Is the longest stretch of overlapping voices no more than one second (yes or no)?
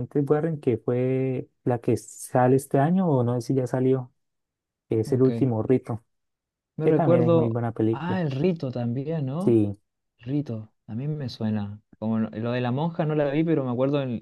no